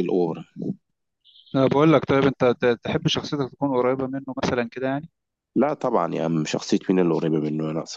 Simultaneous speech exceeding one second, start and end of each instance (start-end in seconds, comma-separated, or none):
none